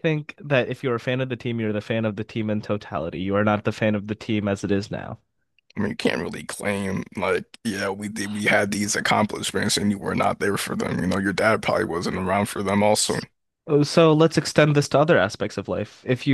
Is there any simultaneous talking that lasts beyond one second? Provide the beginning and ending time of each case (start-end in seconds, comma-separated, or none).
none